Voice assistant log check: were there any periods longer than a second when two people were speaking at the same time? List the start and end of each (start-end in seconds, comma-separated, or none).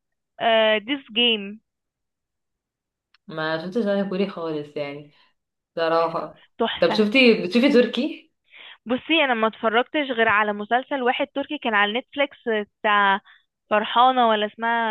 none